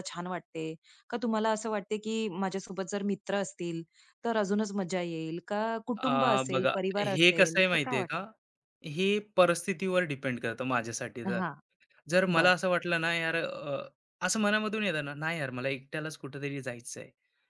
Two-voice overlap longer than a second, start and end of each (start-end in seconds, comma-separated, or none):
6.1-8.2